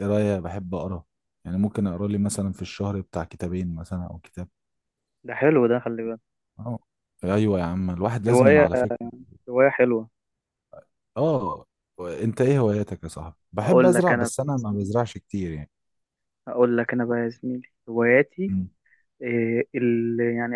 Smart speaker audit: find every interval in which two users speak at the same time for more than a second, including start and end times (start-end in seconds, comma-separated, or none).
13.6-14.9